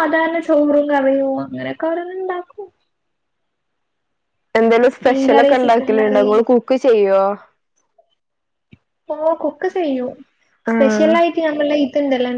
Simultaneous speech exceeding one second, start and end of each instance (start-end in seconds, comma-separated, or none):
5.1-6.3